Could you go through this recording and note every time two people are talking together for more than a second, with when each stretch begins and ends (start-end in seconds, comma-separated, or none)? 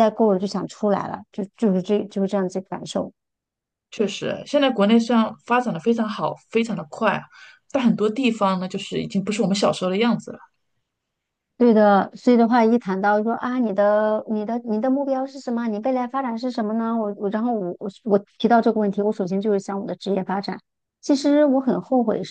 none